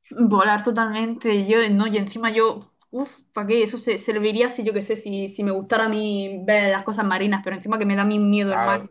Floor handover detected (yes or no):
yes